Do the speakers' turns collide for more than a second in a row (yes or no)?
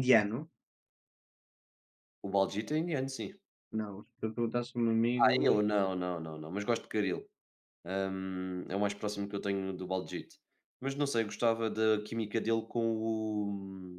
no